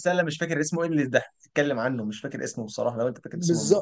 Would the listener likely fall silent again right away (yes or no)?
no